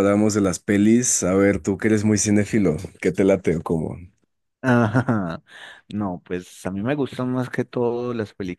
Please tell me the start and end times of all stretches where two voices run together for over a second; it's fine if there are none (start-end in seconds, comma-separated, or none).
none